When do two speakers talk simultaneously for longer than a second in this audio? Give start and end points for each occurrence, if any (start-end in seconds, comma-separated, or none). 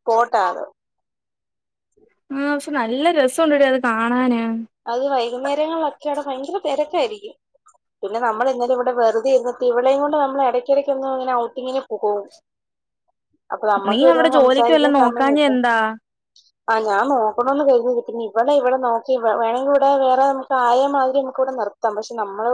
13.9-15.5